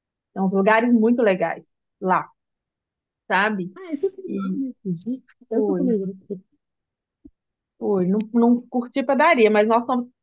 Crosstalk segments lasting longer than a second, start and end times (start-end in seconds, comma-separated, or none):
none